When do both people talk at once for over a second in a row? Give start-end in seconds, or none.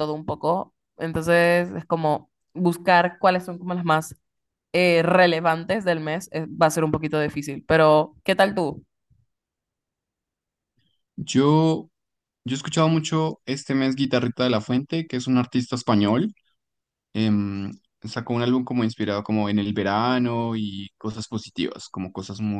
none